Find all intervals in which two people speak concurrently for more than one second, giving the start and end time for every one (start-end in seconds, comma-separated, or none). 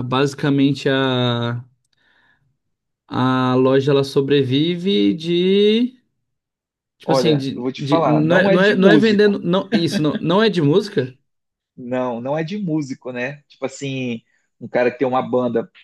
7.0-9.4